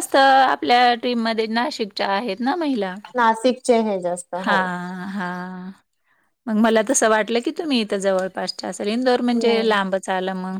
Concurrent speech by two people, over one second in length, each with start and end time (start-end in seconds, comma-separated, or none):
none